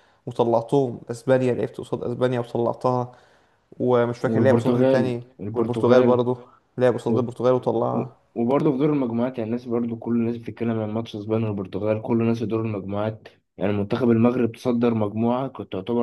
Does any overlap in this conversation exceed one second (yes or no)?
yes